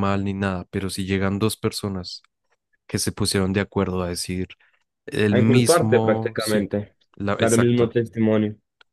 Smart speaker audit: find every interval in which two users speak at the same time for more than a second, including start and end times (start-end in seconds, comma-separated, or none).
5.3-6.7